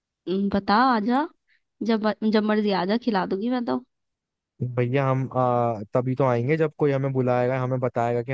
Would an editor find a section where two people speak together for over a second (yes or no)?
no